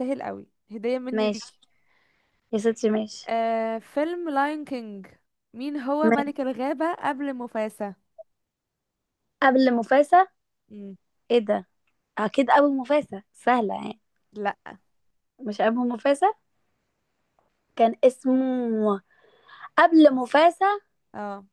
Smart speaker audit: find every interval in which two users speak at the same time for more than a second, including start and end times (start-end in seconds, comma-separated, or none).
none